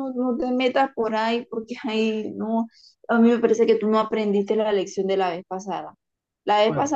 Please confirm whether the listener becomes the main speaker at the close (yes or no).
no